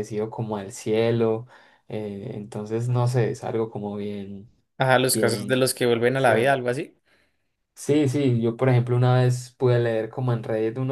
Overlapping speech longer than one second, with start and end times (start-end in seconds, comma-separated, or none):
5.1-6.6